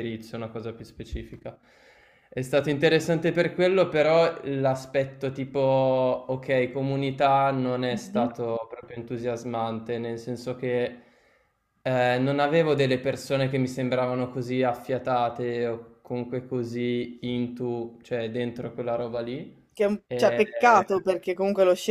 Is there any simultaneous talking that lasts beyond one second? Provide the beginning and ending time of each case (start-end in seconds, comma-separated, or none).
none